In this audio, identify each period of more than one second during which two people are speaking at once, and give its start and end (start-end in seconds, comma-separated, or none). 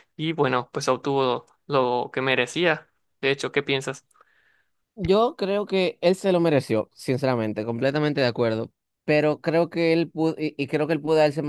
none